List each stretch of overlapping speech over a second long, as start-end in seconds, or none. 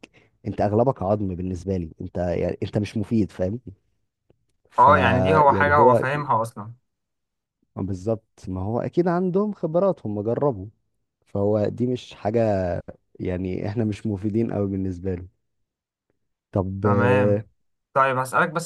none